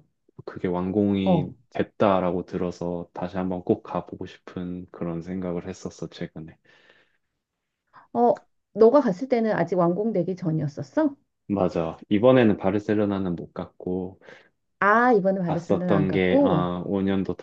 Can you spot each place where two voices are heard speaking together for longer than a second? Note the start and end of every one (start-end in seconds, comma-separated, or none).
15.4-16.7